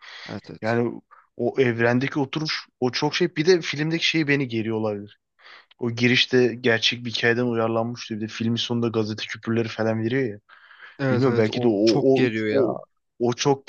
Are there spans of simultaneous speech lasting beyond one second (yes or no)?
yes